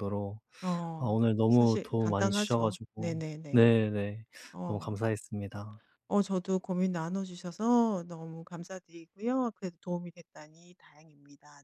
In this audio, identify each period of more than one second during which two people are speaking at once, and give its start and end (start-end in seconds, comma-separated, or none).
1.0-3.6